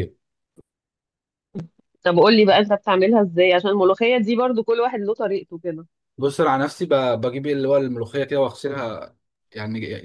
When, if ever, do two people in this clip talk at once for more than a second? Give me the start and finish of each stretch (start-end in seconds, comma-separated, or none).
none